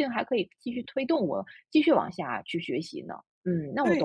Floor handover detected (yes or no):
yes